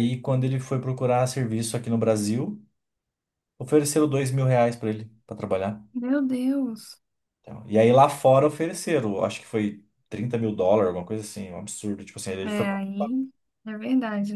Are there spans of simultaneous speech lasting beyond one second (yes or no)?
no